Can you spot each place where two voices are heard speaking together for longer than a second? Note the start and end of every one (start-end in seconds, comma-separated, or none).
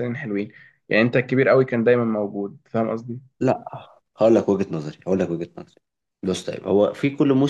none